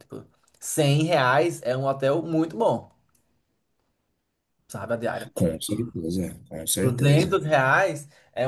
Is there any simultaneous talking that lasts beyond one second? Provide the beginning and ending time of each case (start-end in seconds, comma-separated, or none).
none